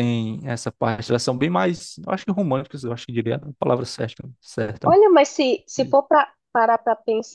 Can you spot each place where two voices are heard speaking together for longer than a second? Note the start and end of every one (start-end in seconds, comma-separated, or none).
none